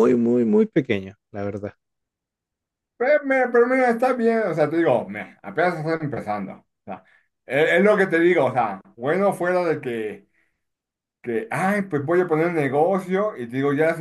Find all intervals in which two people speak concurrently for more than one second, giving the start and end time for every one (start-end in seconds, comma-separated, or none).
none